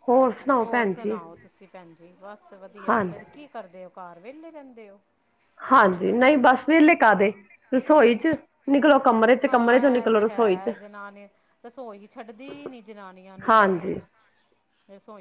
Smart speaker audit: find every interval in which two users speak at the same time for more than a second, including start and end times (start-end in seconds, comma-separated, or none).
9.5-10.7